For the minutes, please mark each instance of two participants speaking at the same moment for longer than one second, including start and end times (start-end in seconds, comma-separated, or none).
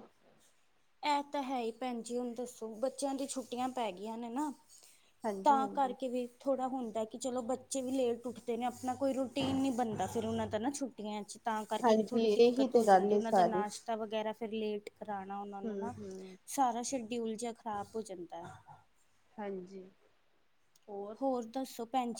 11.8-13.6